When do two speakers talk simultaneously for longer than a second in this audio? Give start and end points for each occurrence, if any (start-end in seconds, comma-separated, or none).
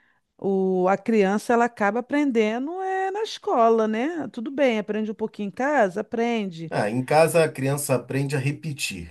none